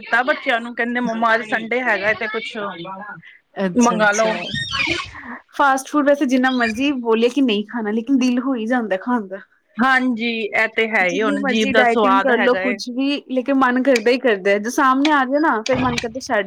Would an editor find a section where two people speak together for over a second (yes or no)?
yes